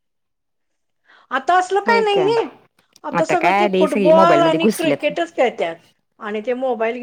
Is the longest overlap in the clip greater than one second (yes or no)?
yes